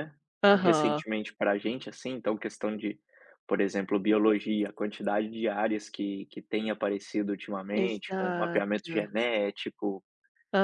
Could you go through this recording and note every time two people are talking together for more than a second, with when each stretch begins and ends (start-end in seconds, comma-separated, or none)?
7.7-9.1